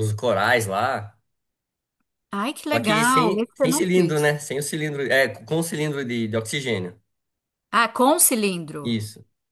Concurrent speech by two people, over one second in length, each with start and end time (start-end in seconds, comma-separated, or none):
2.7-4.3